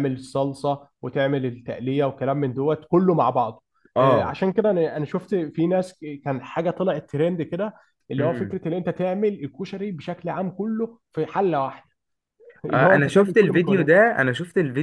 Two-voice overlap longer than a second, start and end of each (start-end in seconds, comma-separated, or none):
12.7-13.9